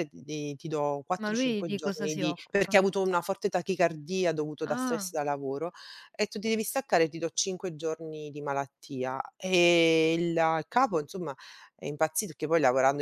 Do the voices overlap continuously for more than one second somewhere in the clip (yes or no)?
yes